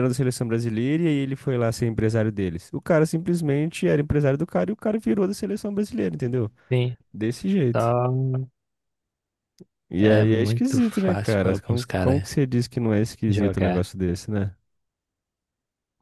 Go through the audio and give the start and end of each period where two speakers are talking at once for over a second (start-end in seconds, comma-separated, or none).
10.0-12.3